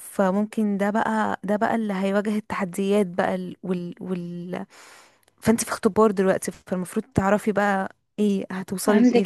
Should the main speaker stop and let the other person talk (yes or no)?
yes